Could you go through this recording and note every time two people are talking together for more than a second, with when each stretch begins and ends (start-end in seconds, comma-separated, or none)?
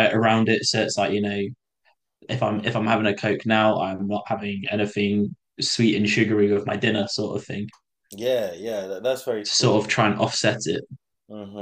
none